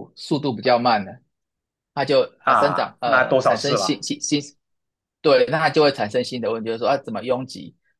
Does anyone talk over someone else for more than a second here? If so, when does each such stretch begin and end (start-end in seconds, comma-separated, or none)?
2.4-4.0